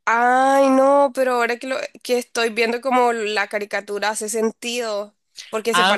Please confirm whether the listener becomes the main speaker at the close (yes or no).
yes